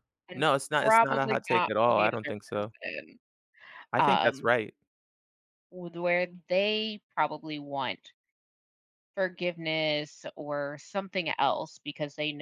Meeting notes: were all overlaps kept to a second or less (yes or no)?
no